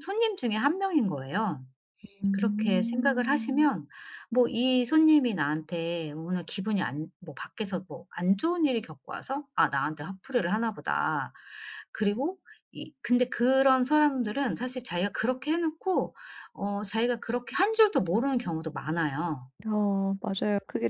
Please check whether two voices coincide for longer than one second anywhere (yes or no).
yes